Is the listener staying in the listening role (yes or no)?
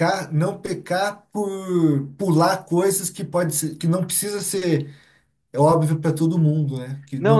no